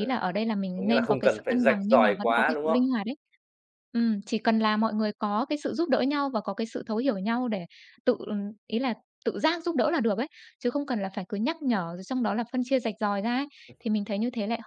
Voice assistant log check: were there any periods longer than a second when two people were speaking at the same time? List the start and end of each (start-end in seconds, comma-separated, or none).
0.7-2.8